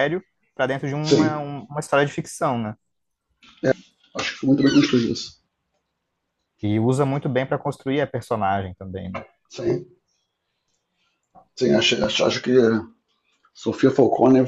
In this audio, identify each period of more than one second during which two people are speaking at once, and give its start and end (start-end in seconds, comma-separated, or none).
none